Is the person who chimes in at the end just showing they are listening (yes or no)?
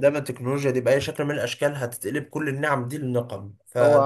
no